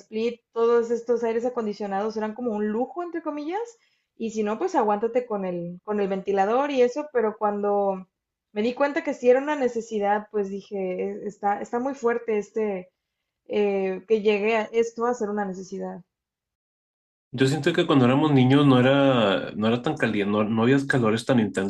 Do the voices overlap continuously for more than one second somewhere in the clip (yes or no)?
no